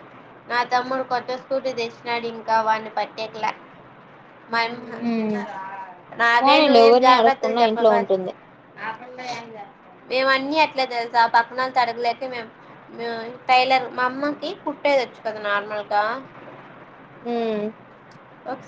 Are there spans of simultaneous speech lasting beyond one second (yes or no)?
yes